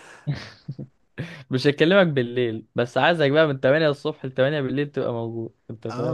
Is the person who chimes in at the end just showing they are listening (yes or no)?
no